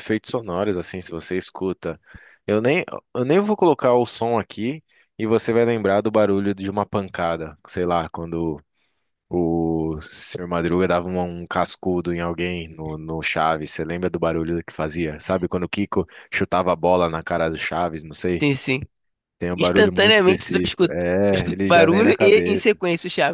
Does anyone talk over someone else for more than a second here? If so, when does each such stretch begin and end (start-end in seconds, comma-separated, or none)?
19.6-22.8